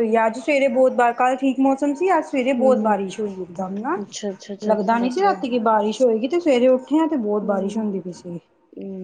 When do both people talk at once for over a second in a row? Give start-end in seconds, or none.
none